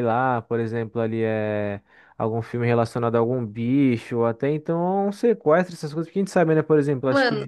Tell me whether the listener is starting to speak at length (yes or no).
no